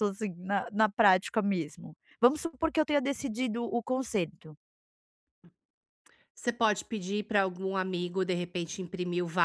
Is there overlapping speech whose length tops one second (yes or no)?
no